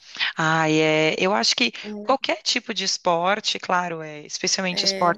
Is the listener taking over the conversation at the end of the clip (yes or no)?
no